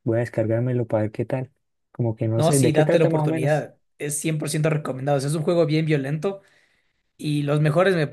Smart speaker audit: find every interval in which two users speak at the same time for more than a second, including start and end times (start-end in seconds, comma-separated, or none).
2.4-3.7